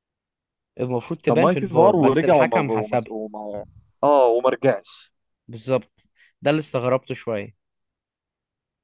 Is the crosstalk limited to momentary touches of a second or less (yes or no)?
no